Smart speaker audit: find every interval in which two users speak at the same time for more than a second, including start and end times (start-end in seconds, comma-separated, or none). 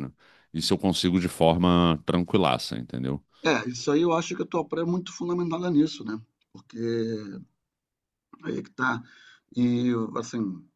none